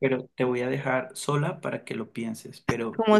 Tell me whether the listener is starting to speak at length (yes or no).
yes